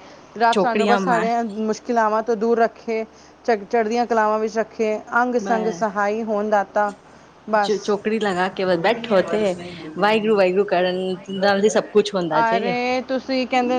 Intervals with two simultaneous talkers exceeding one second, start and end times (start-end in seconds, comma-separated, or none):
none